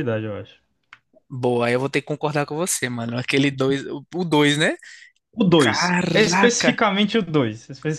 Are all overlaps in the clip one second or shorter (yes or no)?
no